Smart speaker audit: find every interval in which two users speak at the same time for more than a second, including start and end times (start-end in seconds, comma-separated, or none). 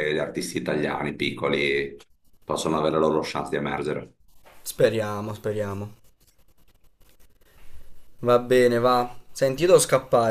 none